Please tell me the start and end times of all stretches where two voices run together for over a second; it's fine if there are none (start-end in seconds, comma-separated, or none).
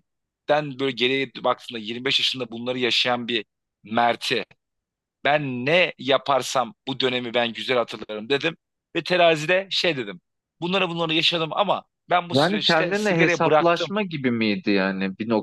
12.3-13.9